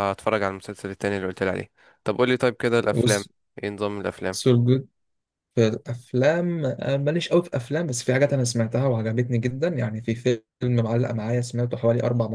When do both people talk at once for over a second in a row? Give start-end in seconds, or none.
none